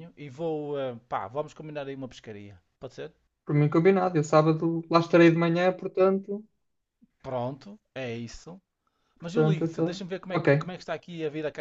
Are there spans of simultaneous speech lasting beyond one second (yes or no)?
yes